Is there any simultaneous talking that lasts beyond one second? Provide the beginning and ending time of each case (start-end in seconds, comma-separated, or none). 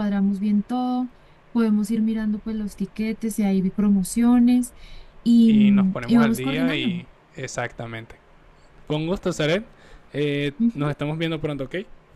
5.5-7.0